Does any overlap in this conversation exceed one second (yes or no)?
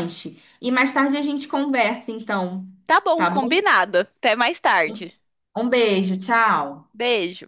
no